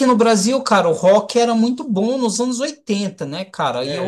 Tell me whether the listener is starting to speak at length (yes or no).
no